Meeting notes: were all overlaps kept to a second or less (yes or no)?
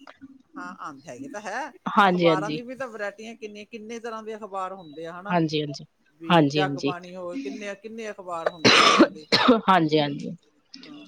yes